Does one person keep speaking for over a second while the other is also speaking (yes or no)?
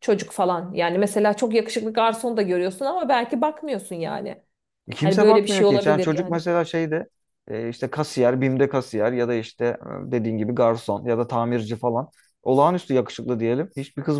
yes